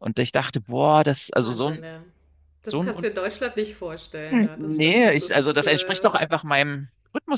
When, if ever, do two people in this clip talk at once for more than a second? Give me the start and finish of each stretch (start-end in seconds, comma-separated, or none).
4.5-6.1